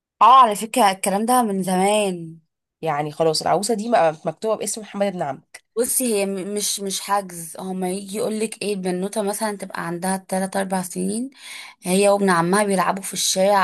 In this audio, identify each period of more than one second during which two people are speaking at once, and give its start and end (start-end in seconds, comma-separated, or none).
none